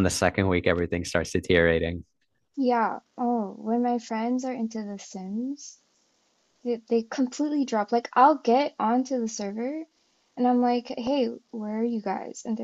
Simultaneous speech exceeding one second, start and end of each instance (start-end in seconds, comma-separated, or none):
none